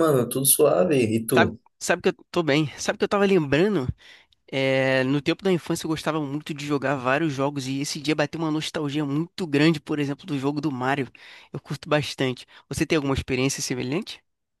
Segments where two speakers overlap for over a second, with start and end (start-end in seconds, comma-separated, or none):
none